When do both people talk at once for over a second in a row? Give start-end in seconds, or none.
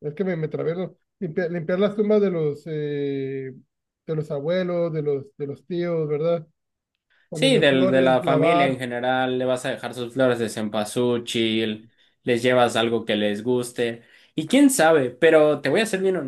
7.3-8.8